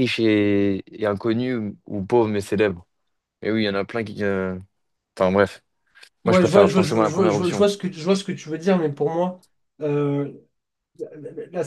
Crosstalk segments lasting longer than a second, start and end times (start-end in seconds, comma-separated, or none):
6.2-7.7